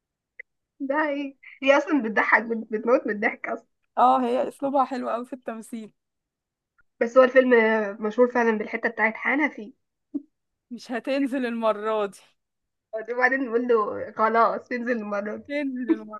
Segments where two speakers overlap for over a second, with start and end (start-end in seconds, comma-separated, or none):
none